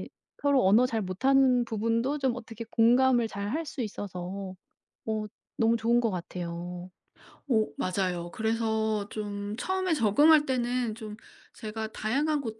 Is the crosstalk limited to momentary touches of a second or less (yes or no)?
yes